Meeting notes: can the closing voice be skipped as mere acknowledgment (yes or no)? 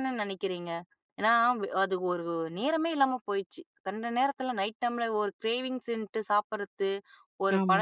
yes